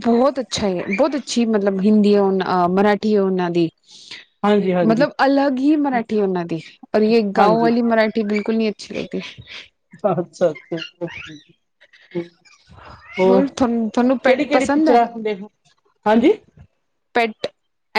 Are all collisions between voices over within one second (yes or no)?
no